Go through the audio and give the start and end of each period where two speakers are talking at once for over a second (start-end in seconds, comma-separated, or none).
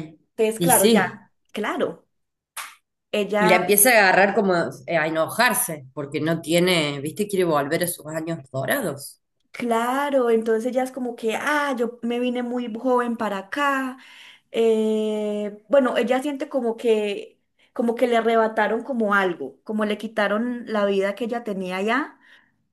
none